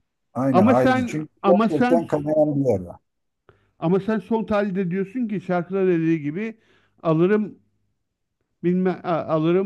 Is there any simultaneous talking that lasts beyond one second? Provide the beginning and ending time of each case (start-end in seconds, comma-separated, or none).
0.5-2.1